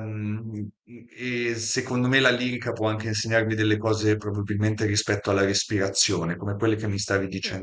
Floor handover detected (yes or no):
no